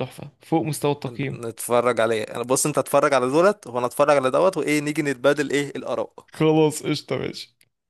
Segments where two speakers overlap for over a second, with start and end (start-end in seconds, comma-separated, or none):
none